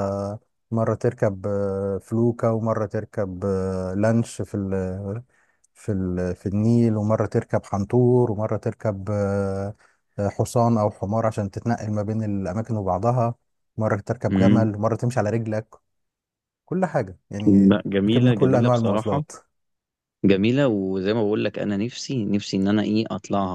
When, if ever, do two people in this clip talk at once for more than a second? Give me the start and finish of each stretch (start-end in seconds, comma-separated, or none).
17.5-19.2